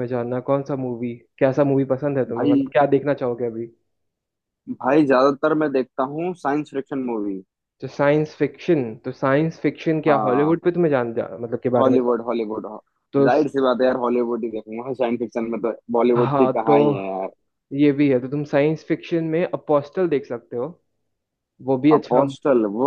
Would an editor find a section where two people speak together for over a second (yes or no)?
no